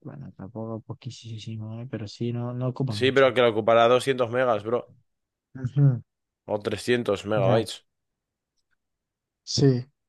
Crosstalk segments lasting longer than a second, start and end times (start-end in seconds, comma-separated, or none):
none